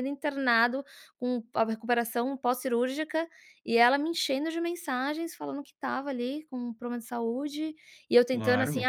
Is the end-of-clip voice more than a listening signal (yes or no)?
no